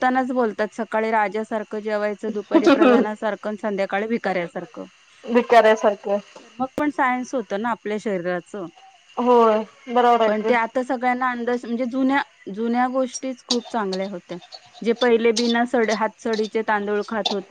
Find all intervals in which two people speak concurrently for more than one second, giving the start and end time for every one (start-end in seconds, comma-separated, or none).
none